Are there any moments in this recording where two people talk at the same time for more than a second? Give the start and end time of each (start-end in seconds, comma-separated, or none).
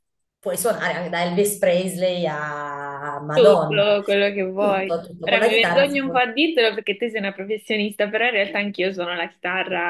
4.6-6.2